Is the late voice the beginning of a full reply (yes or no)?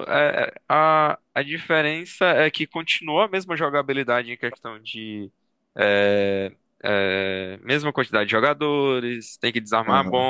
no